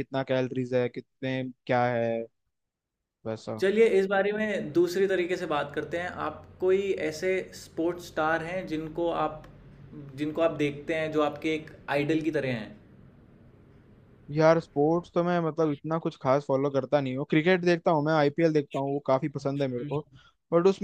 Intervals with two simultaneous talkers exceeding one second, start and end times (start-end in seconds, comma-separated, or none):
none